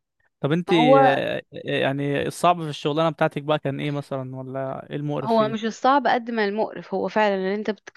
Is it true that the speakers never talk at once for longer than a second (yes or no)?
yes